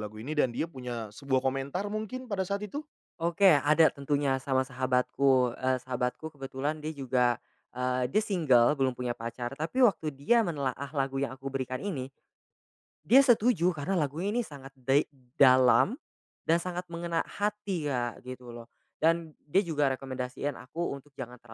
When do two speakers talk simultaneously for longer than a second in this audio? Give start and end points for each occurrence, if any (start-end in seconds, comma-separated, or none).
none